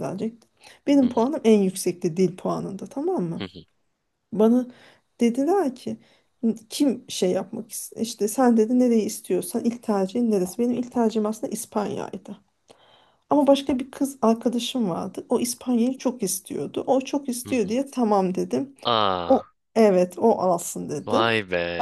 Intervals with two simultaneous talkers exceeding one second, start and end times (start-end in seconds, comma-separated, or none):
none